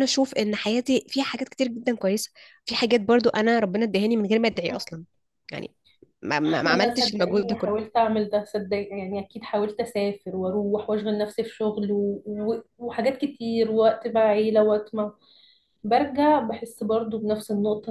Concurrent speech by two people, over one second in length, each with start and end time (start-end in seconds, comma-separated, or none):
6.7-7.9